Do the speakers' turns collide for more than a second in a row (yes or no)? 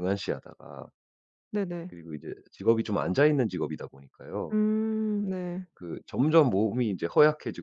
no